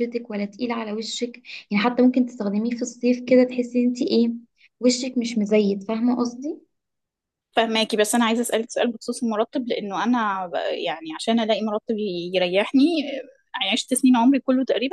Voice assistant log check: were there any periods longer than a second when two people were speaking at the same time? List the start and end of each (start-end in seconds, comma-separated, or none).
none